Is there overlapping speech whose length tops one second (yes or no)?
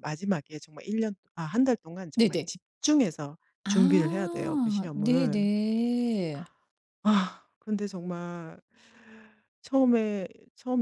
yes